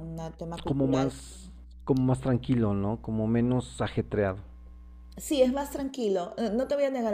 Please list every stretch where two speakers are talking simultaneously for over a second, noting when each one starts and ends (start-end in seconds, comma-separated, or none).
none